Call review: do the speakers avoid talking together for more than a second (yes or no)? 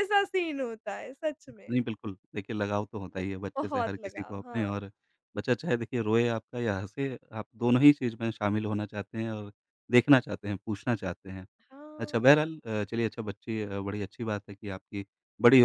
no